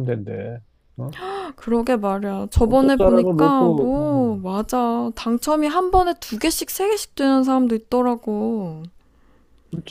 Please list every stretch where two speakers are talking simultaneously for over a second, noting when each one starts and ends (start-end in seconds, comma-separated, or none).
2.7-4.3